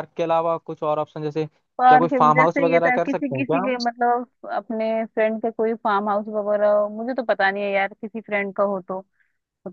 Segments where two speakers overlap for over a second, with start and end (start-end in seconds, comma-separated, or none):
1.8-3.8